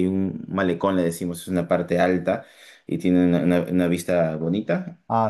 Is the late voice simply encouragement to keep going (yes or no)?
yes